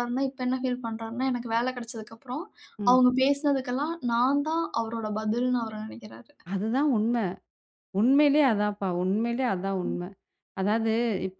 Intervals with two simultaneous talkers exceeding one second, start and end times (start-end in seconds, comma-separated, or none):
none